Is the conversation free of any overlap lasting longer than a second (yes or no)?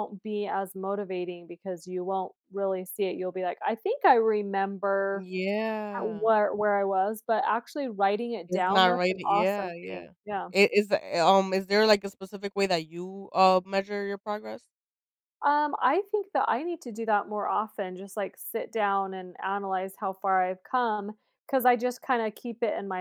no